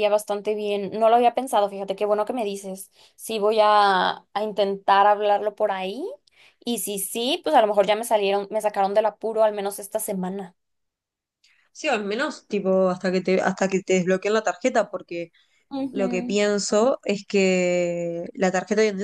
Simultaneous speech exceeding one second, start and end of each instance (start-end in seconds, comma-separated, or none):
none